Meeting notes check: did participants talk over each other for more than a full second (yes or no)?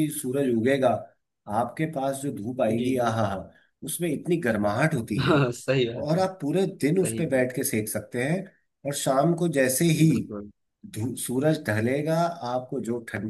no